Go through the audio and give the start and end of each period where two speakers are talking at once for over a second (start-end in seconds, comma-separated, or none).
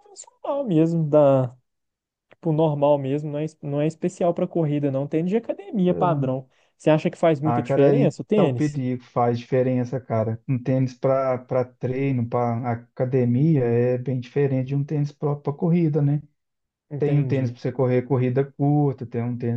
7.4-8.8